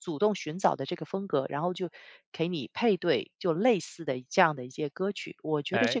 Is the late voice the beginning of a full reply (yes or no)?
yes